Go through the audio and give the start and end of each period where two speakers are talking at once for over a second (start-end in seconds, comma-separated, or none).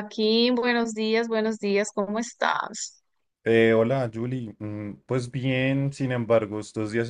none